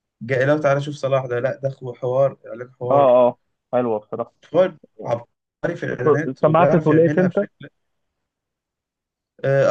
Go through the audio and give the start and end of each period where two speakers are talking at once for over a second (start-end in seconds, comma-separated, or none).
6.0-7.5